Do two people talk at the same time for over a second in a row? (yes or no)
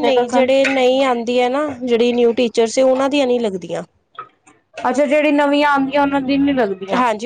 no